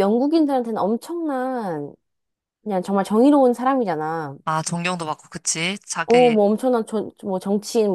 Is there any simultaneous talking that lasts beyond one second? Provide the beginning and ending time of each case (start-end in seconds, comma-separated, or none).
none